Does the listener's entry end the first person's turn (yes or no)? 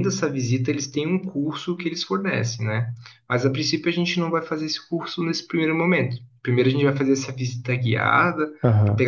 no